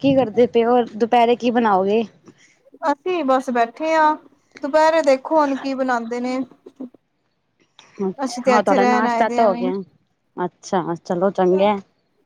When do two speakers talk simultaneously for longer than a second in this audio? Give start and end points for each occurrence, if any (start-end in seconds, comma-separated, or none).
8.2-9.6